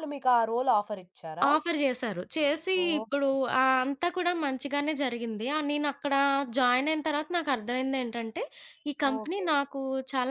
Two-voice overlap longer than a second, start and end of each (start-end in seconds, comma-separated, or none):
none